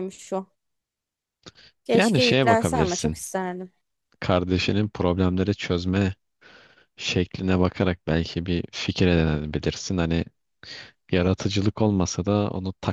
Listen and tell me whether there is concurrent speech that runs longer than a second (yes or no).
yes